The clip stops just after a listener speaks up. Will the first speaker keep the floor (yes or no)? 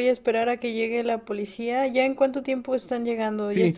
no